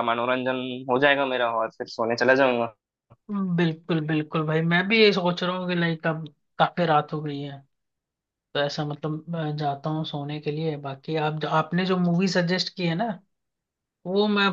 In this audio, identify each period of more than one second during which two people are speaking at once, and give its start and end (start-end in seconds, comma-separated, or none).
none